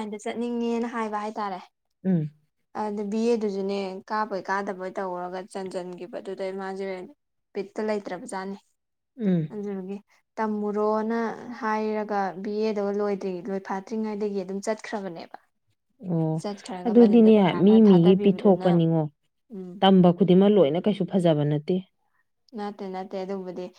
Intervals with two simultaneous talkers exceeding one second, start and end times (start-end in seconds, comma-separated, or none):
16.9-18.7